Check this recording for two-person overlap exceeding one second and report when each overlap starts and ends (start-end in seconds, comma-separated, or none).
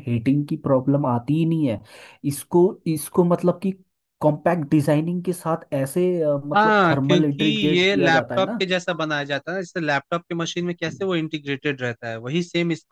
6.5-8.6